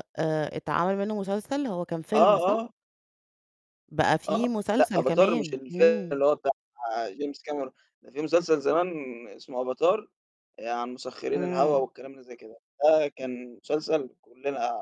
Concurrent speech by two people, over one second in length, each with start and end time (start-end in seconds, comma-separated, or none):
4.3-6.2